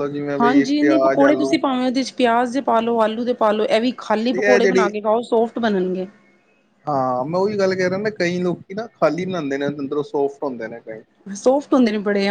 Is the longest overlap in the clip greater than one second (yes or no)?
no